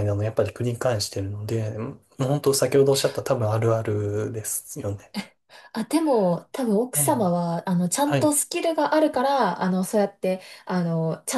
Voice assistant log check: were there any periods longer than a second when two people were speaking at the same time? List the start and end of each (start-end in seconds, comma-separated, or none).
none